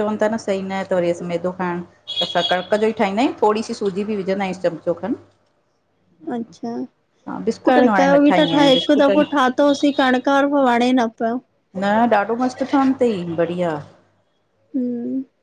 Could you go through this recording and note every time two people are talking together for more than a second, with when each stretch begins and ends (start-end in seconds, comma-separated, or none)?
7.7-9.2